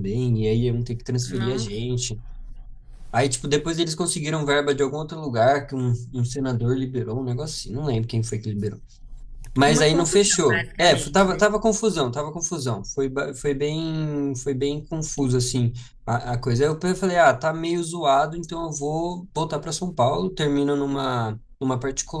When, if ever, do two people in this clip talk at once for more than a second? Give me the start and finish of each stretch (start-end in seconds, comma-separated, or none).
9.7-11.4